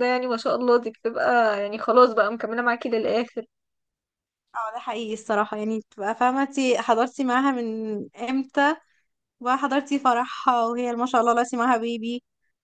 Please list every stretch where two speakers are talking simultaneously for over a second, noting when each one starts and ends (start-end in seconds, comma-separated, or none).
none